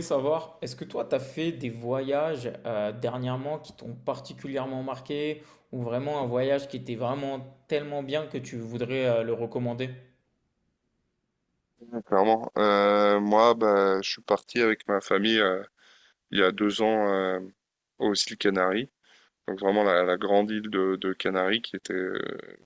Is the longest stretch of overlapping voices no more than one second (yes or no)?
yes